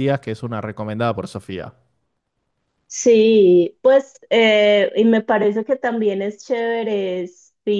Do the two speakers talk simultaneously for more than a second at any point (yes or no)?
no